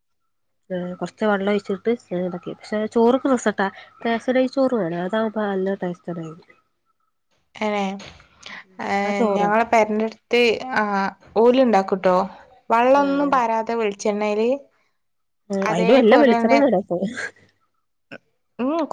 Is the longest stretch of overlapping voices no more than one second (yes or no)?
yes